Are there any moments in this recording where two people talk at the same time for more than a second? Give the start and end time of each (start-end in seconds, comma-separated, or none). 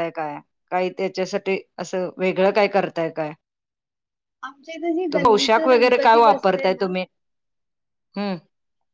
5.1-6.8